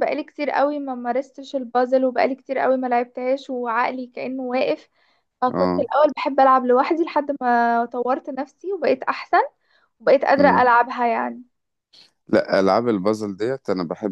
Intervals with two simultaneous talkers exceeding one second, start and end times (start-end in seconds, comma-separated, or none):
none